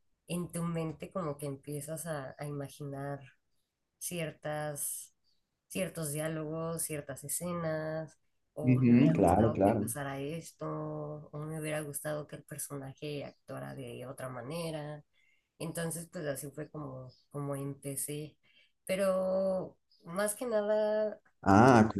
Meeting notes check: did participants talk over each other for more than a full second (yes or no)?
yes